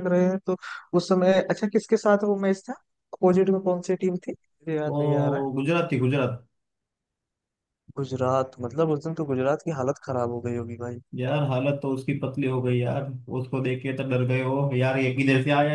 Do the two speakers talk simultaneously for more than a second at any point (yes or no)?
no